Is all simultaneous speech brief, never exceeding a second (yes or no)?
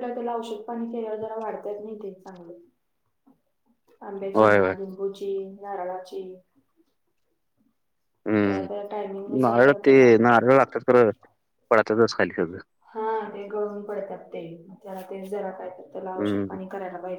no